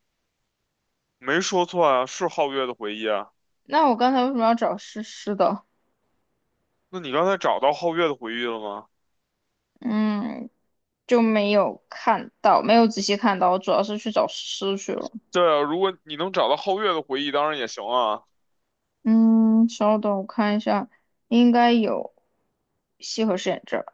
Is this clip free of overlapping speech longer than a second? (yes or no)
yes